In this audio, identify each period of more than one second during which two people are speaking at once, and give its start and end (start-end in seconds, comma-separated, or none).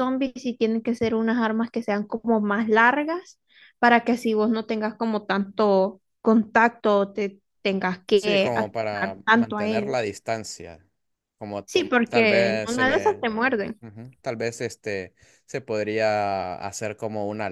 8.1-10.1, 11.7-13.3